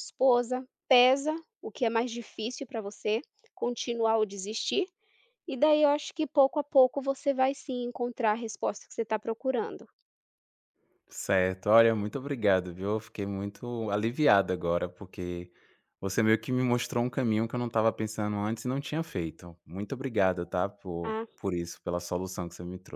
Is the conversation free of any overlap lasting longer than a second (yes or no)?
yes